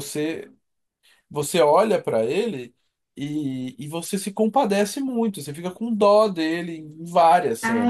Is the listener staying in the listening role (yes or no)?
no